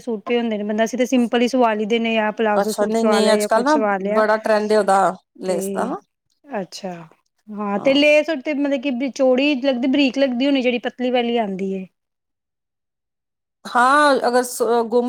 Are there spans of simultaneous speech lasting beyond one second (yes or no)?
no